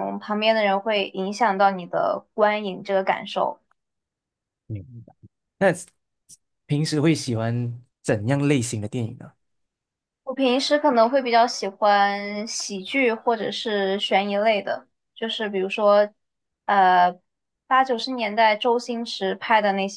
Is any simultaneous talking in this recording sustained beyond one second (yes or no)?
no